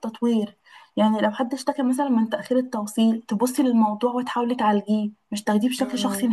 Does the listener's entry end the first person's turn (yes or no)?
yes